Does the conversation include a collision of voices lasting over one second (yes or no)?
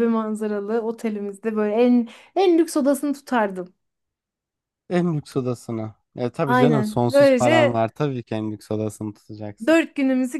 yes